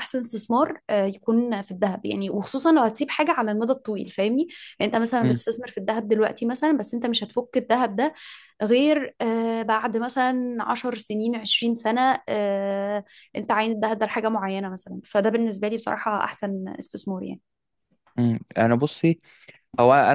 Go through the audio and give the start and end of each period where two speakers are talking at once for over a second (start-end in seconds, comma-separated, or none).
none